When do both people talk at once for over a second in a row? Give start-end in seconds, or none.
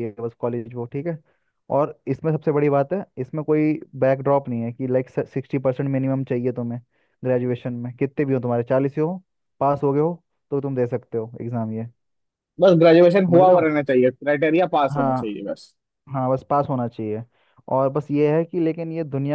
none